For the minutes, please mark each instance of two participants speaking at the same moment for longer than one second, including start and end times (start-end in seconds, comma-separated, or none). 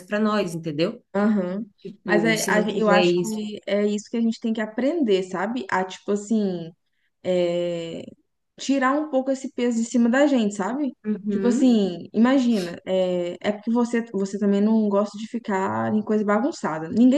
2.0-3.4